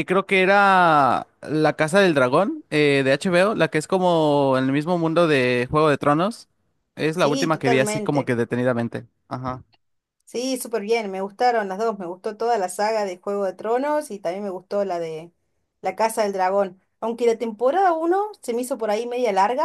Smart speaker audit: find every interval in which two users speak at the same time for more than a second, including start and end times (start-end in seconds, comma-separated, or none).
7.1-8.3